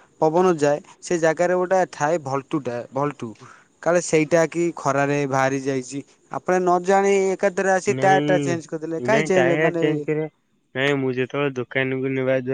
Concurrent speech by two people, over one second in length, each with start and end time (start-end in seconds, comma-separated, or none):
8.0-10.0